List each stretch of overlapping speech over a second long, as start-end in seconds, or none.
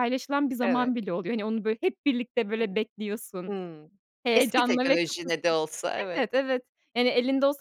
4.3-5.5